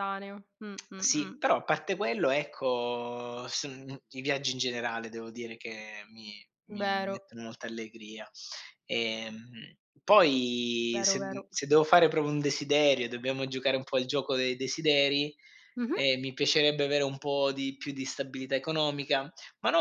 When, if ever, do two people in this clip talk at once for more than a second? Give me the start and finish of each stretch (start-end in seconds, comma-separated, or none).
none